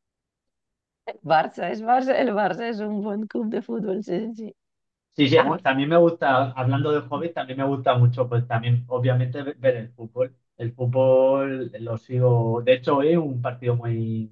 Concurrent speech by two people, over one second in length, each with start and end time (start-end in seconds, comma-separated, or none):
none